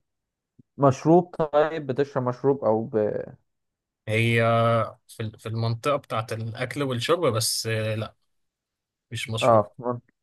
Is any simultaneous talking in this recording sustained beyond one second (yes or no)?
no